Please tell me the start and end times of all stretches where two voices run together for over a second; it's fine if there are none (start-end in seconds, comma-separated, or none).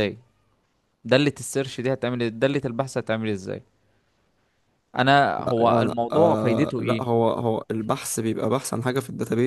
5.4-7.1